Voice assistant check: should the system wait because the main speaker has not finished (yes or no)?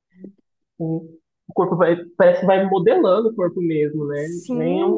no